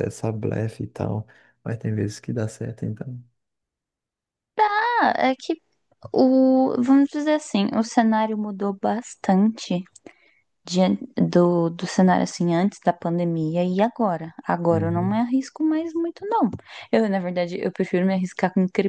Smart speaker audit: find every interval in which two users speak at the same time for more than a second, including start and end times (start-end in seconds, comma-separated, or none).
none